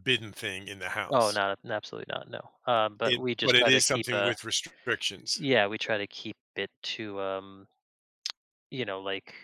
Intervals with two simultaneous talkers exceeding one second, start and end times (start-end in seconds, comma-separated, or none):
3.0-4.3